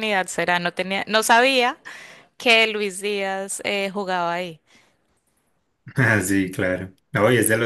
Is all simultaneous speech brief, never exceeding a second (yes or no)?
yes